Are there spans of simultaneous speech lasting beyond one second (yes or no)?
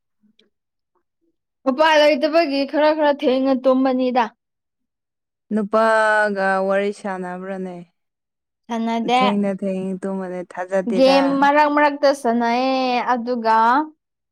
no